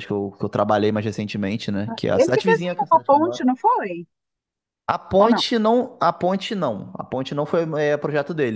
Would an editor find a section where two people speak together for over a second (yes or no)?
yes